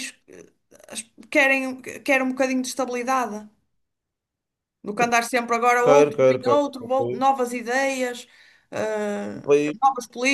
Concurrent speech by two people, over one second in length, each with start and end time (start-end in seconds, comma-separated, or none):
5.8-7.3